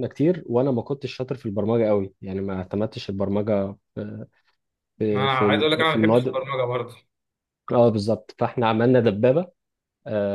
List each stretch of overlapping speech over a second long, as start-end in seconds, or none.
5.1-6.5